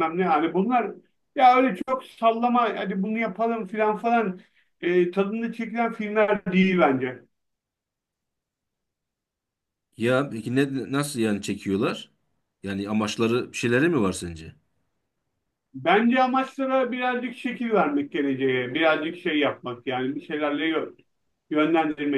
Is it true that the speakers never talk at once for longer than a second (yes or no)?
yes